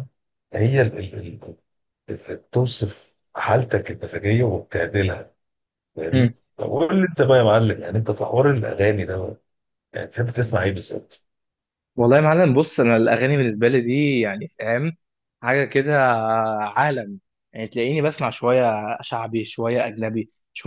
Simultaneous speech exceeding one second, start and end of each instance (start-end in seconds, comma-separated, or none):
none